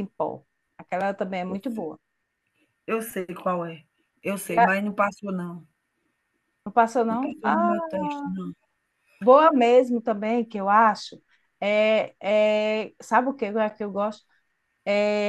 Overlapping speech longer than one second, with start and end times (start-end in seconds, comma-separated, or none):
none